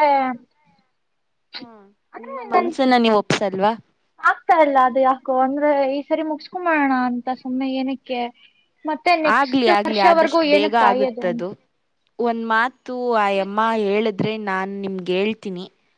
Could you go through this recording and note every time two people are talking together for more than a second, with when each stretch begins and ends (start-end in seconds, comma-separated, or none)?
9.4-11.3